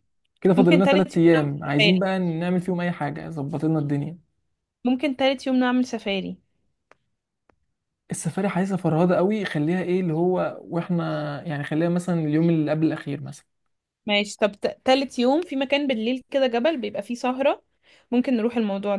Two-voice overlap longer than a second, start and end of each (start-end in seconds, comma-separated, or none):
0.6-2.0